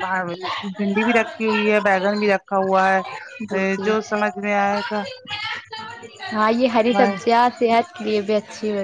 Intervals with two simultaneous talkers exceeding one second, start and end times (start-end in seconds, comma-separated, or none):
none